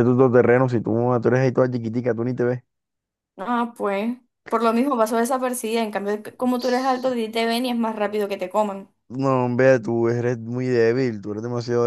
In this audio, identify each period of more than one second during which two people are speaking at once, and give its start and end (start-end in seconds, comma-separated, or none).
none